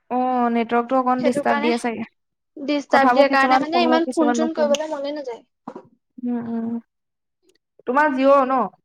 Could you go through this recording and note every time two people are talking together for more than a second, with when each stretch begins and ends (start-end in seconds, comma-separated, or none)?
2.9-4.8